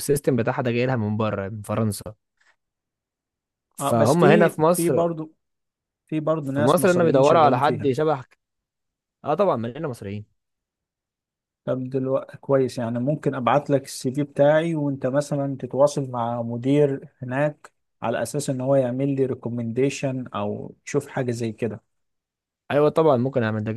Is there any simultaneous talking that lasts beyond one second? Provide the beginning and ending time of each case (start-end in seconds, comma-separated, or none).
3.8-5.0, 6.4-7.9